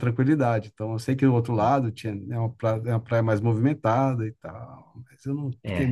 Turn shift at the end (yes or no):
yes